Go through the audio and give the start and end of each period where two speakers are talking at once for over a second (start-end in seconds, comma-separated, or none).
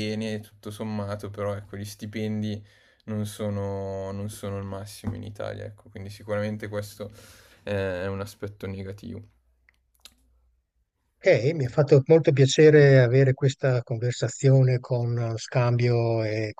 none